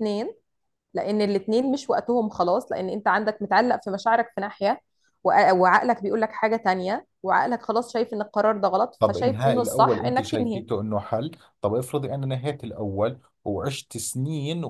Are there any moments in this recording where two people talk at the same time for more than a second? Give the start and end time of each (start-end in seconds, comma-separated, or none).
9.0-10.7